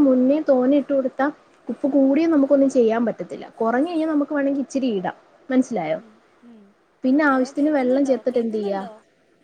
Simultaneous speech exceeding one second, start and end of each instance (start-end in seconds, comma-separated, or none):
7.3-8.8